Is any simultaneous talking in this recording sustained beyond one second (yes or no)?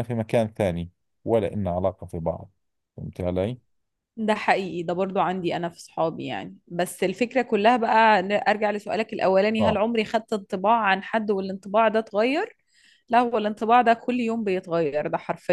no